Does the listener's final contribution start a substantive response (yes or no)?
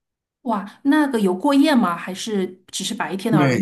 yes